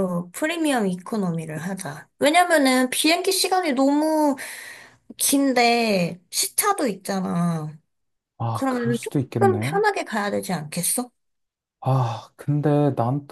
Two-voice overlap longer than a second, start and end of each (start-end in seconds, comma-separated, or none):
8.5-9.8